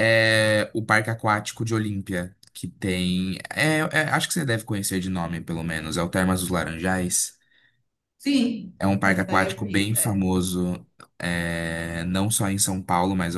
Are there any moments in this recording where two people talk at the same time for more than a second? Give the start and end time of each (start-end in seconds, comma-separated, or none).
8.8-10.2